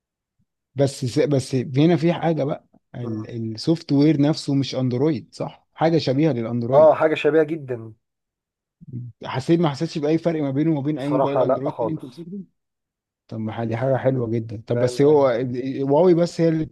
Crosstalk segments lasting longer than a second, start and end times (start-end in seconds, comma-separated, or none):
11.0-12.3